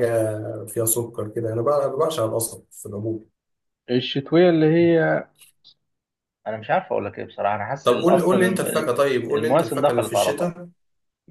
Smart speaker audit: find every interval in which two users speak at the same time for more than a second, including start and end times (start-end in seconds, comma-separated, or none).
7.8-10.6